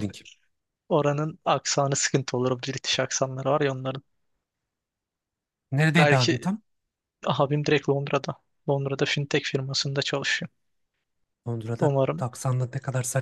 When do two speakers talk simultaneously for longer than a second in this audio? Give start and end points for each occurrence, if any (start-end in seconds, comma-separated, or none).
none